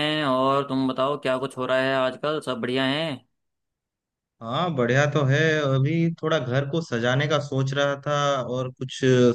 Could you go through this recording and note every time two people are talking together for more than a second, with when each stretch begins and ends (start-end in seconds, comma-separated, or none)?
none